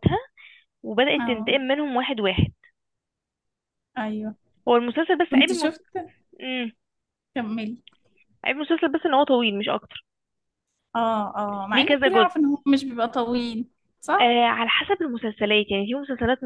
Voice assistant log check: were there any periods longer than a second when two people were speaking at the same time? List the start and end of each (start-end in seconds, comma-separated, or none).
none